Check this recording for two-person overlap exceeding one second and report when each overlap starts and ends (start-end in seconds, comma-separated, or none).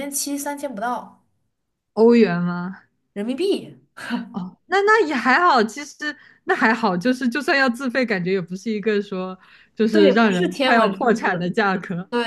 9.9-11.5